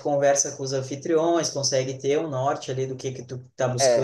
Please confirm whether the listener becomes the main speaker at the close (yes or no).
no